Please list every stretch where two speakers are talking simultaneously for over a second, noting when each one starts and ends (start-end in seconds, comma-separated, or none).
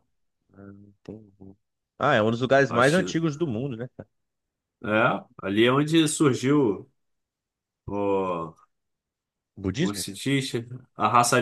none